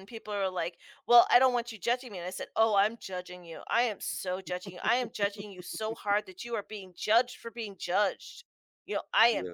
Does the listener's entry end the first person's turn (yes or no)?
no